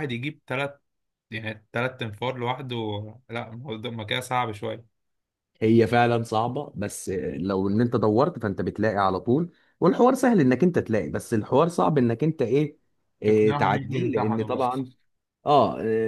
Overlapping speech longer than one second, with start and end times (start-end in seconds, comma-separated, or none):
13.2-14.6